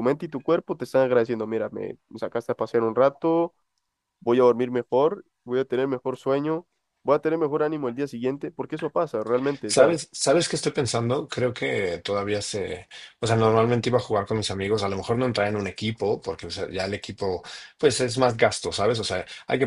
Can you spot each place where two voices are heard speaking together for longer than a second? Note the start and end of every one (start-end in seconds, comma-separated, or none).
none